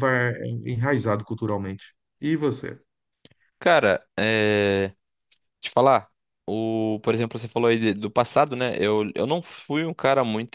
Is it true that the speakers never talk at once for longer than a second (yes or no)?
yes